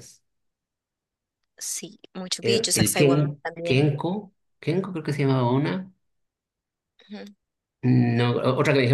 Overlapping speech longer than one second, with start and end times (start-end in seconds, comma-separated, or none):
2.4-3.9